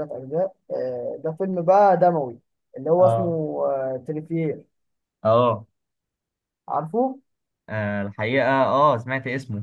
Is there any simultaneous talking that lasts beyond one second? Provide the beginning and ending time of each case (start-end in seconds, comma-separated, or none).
none